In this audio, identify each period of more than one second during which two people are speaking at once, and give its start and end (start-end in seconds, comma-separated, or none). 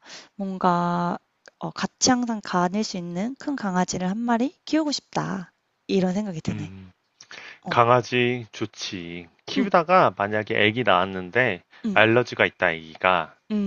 none